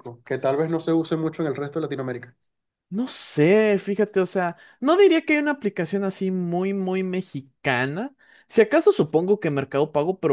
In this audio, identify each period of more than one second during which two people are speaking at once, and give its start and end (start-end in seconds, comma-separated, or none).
none